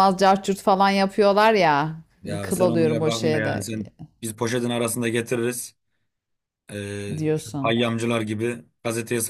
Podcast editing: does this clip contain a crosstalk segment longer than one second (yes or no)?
yes